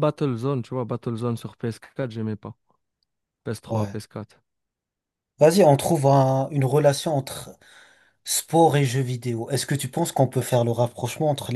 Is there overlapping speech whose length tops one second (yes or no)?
no